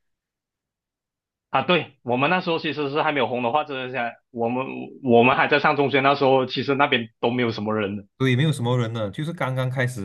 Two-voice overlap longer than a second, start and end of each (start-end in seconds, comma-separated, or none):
none